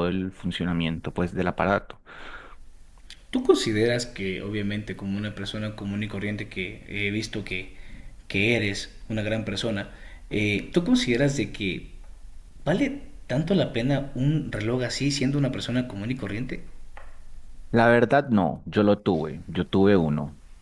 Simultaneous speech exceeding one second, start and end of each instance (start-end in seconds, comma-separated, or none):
none